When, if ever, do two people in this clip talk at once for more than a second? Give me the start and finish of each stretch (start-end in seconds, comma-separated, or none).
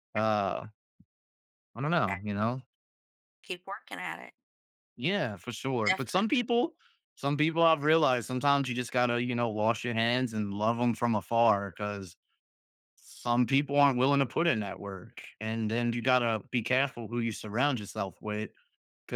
none